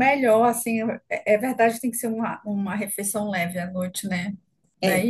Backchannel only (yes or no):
no